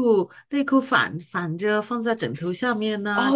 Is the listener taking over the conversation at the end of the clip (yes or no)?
yes